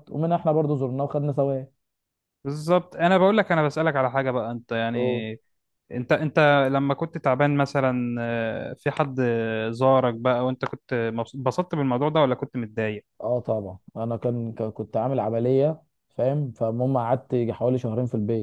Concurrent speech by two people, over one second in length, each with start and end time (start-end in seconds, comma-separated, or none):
none